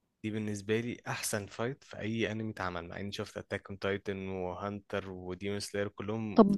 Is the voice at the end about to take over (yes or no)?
yes